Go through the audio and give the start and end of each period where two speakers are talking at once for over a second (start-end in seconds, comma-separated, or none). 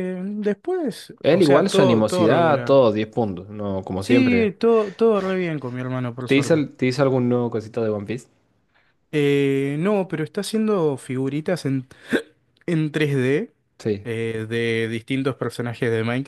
1.2-2.8